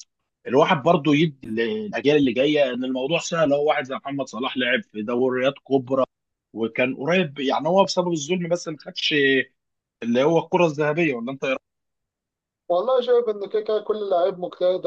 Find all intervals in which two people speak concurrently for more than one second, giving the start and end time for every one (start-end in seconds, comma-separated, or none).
none